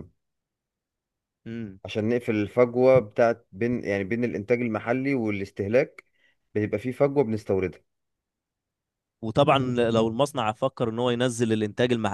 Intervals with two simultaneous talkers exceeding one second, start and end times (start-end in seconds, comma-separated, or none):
none